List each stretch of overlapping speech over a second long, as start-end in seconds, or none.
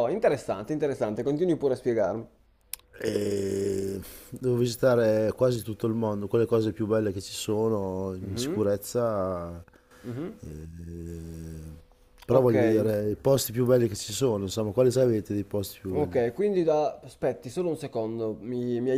none